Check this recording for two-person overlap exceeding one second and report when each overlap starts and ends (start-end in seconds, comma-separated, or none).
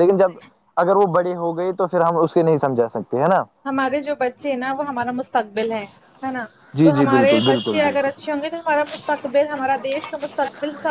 6.8-8.3